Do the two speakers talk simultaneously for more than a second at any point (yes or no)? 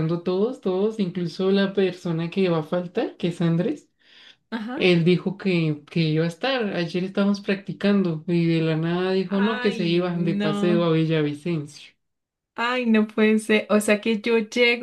yes